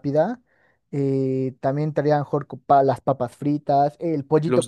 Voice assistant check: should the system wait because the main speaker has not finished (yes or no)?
yes